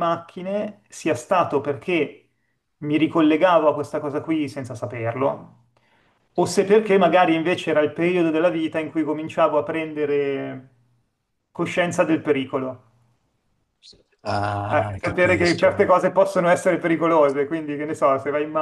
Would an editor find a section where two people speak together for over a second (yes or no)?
yes